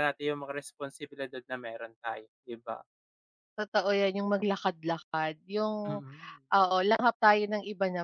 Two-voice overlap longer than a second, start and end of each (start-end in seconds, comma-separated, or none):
none